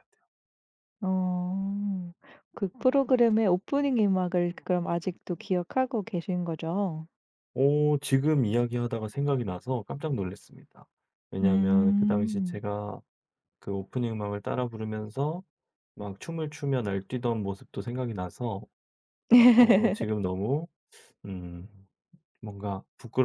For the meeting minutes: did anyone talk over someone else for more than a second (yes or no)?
yes